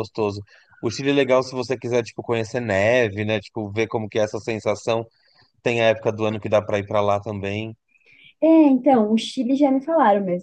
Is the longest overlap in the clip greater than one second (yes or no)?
no